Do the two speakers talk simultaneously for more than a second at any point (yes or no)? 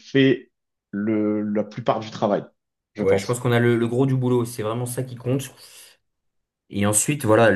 no